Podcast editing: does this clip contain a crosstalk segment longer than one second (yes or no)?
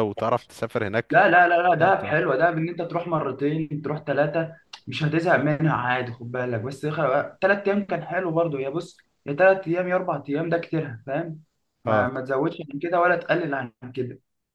no